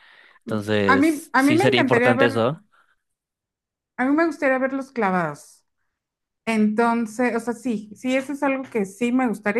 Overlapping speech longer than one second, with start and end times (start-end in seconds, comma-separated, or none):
0.9-2.4